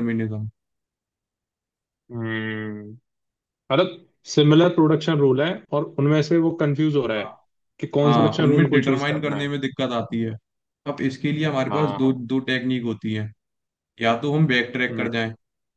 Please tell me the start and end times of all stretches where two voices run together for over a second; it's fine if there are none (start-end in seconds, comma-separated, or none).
8.0-9.5